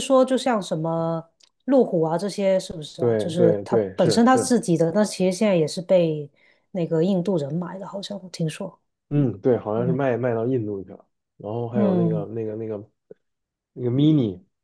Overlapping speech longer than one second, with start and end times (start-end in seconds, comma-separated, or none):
3.0-4.5